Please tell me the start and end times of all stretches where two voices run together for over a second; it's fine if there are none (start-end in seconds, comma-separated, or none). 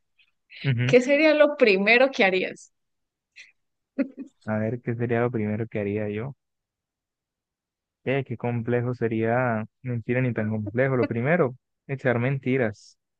none